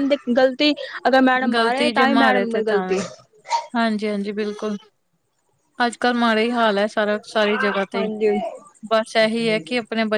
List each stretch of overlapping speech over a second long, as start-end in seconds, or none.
1.5-3.0